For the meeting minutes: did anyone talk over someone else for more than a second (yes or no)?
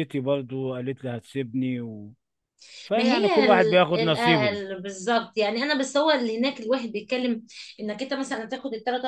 yes